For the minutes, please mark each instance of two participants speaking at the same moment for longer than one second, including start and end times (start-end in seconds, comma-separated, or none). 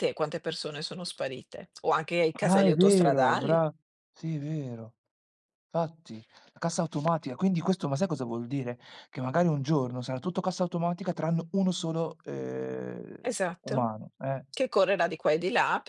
2.4-3.6